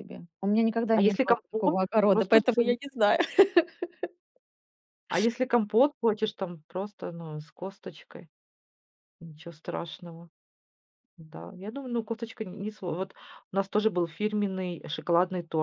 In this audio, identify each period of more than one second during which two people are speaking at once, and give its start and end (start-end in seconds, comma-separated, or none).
0.9-2.4